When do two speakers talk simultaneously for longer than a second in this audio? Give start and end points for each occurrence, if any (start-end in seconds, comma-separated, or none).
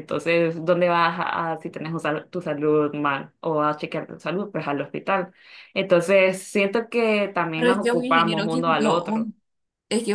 7.5-9.3